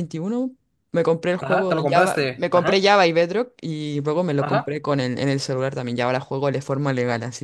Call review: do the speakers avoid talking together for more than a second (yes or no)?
no